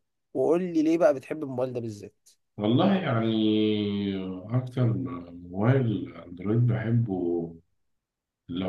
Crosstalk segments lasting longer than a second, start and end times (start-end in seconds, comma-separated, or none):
none